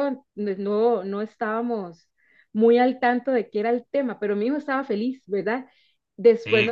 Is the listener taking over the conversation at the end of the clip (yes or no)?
no